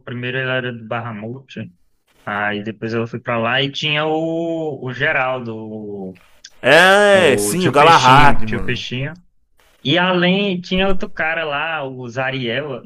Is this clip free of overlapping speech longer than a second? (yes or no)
no